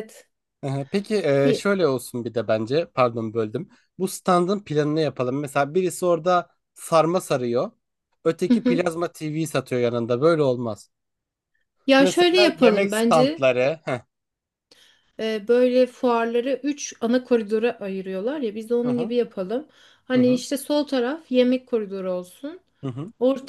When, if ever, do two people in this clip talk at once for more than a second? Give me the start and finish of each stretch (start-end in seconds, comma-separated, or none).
12.0-13.5